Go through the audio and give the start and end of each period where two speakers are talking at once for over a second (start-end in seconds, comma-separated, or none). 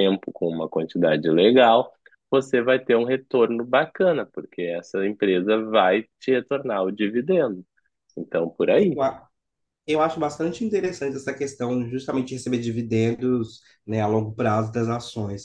none